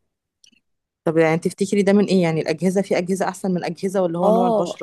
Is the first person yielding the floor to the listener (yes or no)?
yes